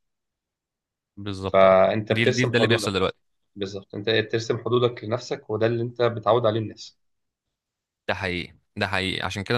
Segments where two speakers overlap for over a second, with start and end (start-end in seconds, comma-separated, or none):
1.4-3.0